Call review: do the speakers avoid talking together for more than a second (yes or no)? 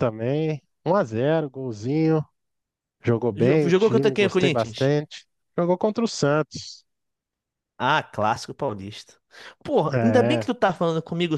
no